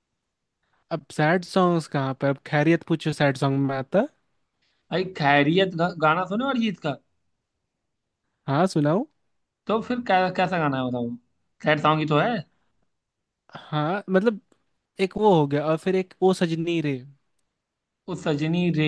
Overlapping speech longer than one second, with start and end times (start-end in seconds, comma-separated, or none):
none